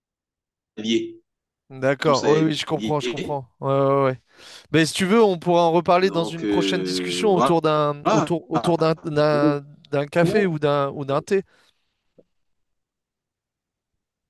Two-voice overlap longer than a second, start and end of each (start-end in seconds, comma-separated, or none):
2.0-3.4, 6.0-7.5